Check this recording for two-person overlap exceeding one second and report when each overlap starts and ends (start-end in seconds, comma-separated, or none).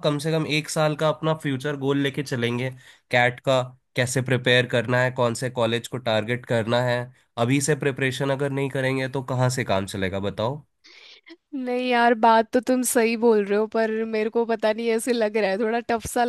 none